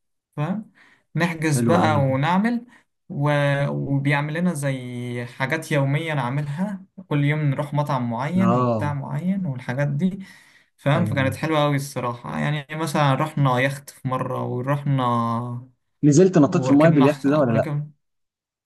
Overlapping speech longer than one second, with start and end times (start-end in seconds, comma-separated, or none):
16.4-17.6